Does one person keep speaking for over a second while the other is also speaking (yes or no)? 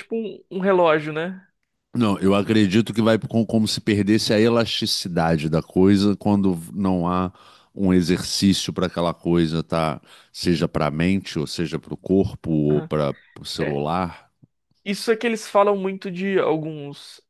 no